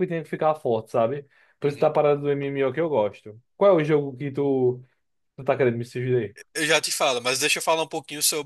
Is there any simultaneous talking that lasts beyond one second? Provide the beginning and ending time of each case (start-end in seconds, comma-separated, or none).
none